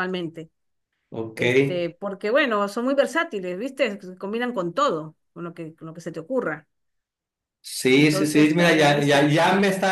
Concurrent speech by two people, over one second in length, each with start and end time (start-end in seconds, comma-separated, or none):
7.9-9.3